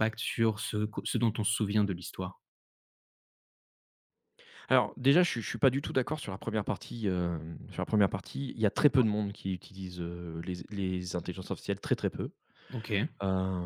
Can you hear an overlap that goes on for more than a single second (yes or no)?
no